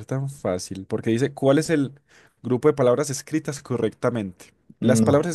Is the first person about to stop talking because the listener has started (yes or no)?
no